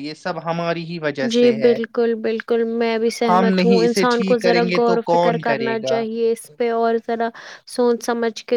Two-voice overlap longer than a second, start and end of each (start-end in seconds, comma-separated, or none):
3.3-6.0